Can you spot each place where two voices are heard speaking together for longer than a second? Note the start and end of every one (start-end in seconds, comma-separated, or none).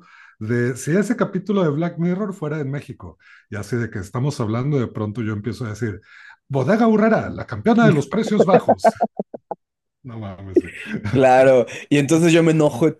none